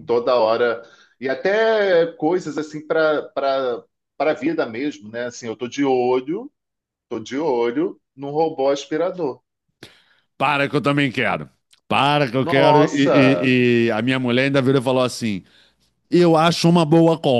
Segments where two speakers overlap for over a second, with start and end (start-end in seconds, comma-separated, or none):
12.4-13.6